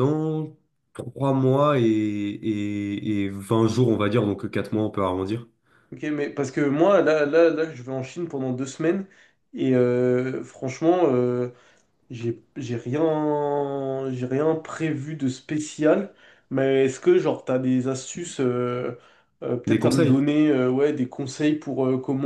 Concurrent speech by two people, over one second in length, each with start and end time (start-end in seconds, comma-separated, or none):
none